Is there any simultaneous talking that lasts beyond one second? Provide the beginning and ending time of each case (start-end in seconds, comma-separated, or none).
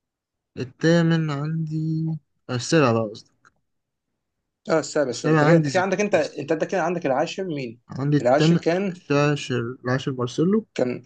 5.1-6.4